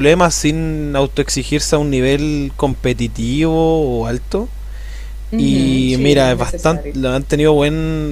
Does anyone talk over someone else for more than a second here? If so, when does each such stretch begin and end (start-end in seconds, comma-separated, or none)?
5.4-7.0